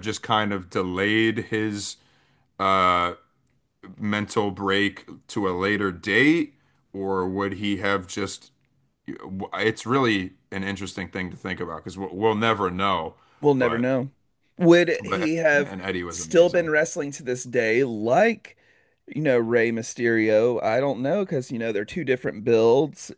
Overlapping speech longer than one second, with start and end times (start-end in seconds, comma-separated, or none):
15.0-16.7